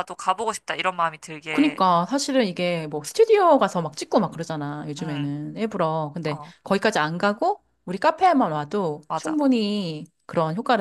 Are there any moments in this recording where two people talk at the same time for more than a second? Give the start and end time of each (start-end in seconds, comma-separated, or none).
none